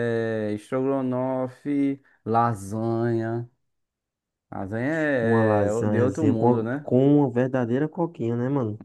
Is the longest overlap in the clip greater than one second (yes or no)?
yes